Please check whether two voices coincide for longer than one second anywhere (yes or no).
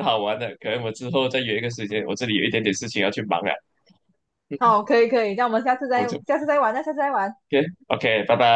no